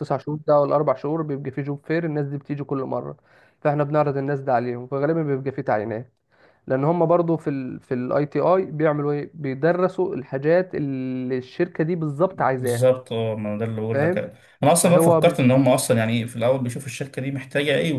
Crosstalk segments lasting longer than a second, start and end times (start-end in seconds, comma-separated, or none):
none